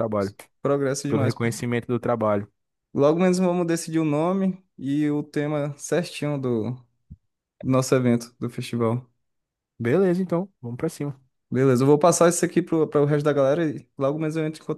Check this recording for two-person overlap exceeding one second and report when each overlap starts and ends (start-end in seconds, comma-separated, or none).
none